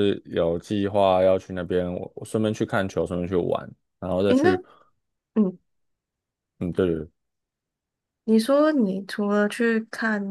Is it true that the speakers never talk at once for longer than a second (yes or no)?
yes